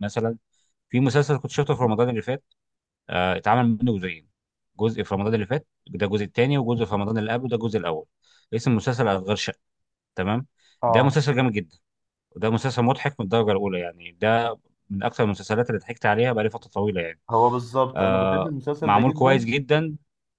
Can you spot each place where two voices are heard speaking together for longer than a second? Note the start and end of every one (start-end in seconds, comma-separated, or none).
17.9-19.5